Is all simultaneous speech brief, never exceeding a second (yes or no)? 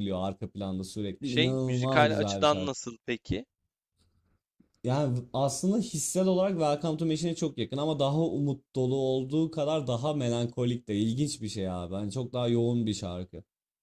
no